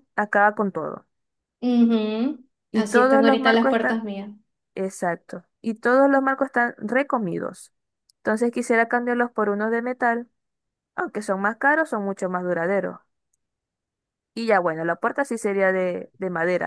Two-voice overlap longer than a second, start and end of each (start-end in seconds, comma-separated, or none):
2.7-4.0